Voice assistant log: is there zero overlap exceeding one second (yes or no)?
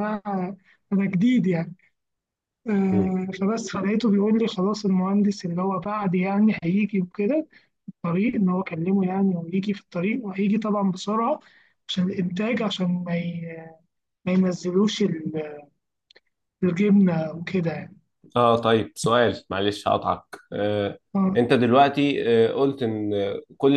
yes